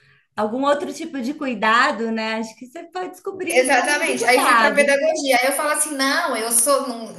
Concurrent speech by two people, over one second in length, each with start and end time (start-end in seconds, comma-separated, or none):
3.5-5.0